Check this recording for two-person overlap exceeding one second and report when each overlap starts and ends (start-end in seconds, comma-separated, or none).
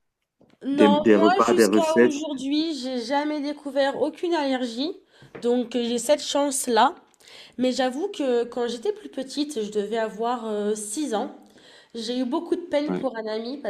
0.7-2.1